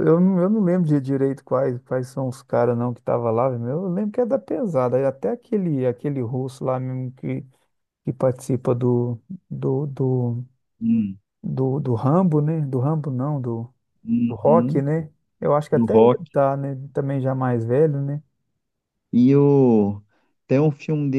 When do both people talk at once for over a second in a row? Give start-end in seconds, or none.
none